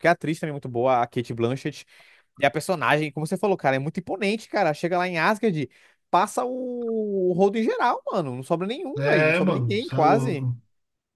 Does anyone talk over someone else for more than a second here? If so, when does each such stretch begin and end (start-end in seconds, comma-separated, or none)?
9.0-10.5